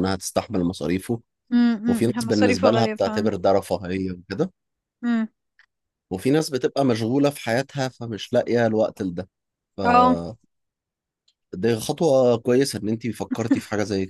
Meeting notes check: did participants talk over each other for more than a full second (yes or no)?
yes